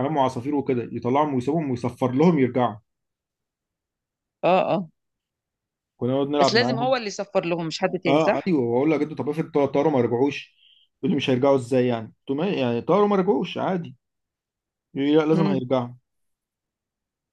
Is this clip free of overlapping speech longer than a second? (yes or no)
yes